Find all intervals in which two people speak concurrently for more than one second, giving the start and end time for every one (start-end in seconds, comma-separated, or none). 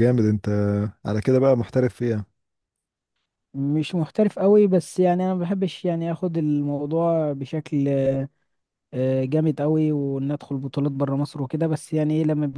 none